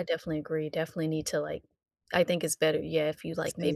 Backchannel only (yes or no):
yes